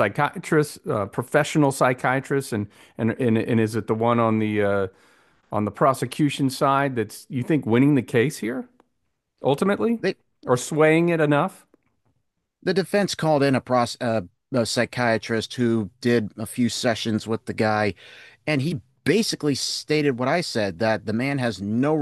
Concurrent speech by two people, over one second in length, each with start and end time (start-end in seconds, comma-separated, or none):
none